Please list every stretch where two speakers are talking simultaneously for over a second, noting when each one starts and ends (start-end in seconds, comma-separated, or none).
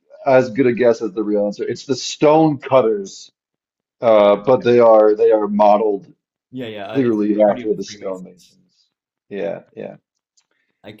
6.9-8.6